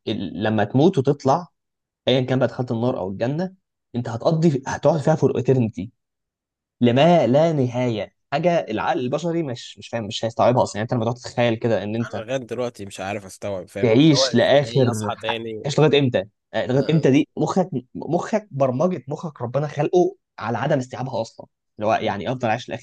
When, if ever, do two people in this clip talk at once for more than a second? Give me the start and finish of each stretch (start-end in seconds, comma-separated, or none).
13.8-15.8